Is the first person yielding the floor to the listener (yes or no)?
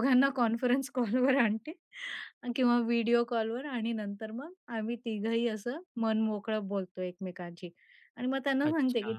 no